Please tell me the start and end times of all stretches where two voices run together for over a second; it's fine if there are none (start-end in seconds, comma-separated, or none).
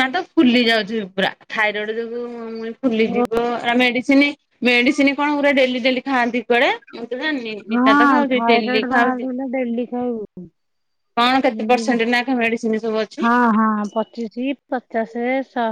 7.7-9.3